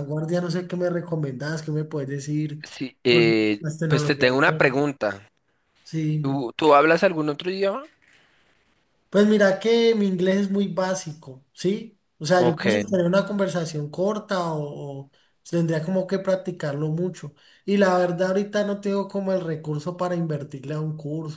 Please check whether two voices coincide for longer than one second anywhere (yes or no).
yes